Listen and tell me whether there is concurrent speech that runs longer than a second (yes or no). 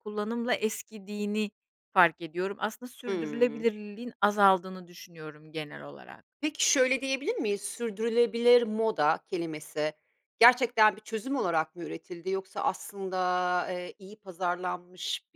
no